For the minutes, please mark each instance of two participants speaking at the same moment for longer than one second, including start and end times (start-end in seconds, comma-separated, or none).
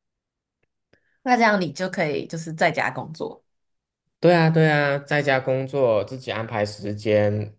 none